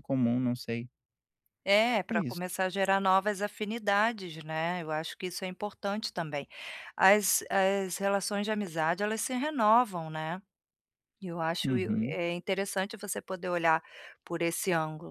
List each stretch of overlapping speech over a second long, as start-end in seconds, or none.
none